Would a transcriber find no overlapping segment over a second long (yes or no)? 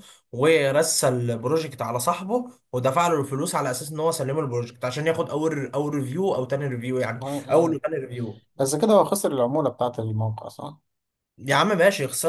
yes